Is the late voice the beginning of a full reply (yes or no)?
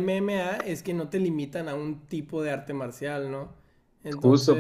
yes